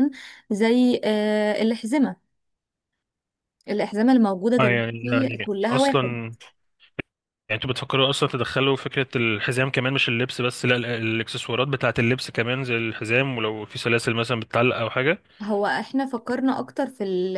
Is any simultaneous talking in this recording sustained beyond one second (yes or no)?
yes